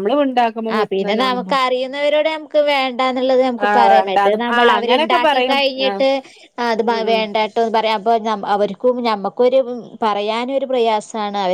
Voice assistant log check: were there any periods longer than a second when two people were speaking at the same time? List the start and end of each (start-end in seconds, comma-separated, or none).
3.6-6.0